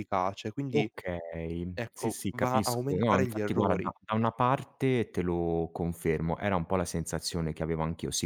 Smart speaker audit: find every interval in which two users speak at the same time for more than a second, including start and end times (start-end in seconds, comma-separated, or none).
1.7-3.9